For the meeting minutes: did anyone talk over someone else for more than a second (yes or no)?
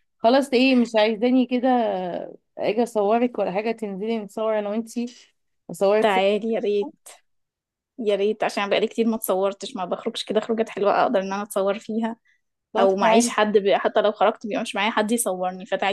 no